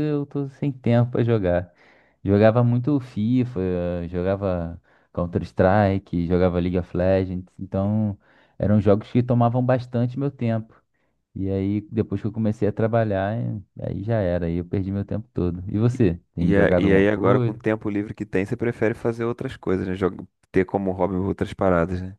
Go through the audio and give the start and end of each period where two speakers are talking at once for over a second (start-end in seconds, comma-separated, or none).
16.4-17.6